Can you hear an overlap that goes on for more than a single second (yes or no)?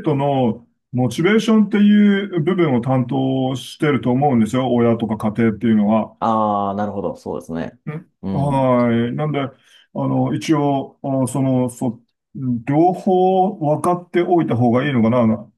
no